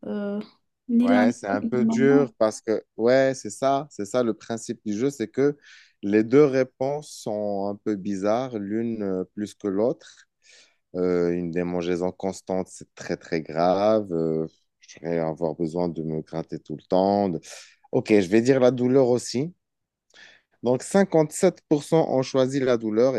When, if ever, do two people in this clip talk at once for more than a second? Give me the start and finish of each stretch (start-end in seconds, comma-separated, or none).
1.0-2.3